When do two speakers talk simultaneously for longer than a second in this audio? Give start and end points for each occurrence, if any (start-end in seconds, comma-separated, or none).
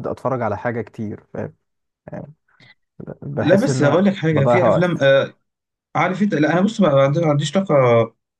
3.4-5.1